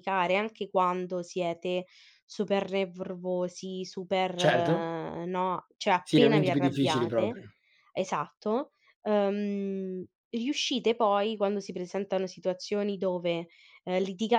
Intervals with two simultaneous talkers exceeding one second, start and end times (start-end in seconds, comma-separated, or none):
6.0-7.4